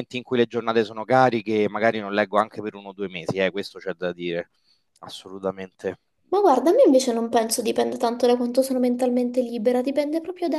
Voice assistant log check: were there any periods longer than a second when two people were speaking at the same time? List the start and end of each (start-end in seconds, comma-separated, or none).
none